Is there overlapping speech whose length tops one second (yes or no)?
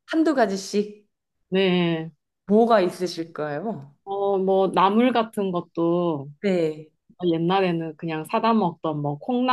no